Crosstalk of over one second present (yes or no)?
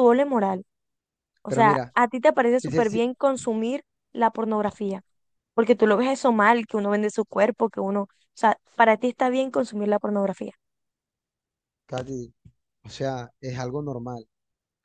no